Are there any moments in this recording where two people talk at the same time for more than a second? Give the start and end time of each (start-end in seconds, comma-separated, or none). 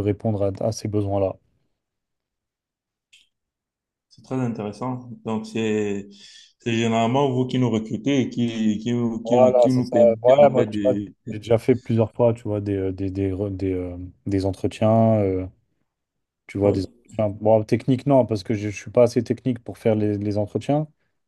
9.2-10.9